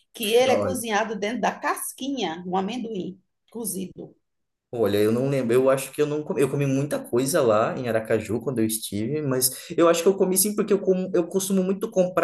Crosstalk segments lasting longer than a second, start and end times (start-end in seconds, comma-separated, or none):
none